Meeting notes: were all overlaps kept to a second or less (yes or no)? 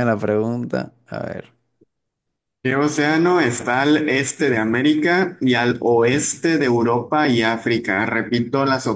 yes